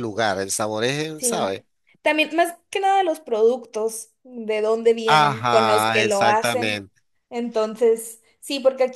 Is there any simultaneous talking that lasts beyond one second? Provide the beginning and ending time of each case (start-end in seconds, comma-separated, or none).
5.0-6.8